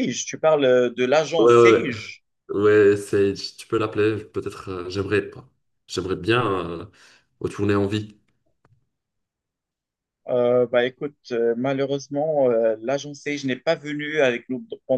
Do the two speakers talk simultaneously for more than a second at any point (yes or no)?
no